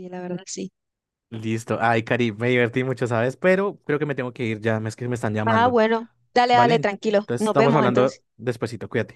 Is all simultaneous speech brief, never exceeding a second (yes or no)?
no